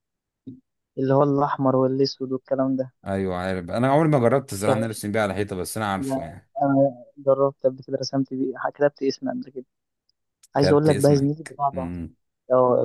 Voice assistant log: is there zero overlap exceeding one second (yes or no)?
no